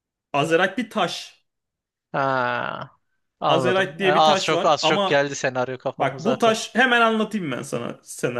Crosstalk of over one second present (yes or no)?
yes